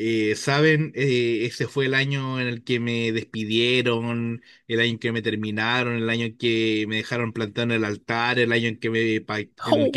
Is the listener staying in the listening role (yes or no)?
yes